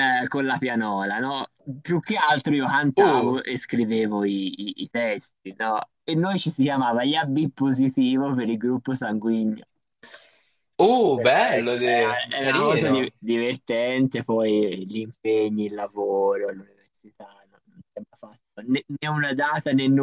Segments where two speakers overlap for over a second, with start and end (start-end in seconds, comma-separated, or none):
11.1-13.0